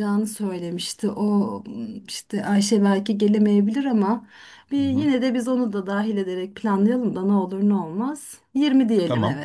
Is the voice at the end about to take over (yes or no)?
yes